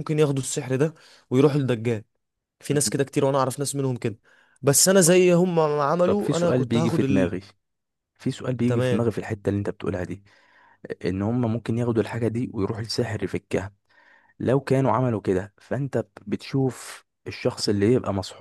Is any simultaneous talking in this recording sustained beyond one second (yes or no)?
yes